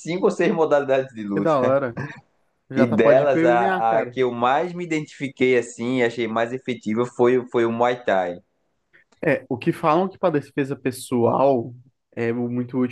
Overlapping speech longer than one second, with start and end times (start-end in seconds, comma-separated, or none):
2.8-4.2